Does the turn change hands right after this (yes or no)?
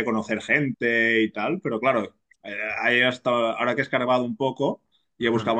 no